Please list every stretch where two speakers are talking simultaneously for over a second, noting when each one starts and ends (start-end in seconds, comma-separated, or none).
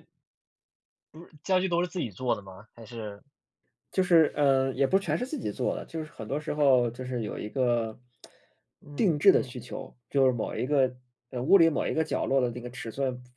none